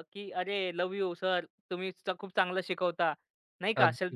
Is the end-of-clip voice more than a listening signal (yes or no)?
no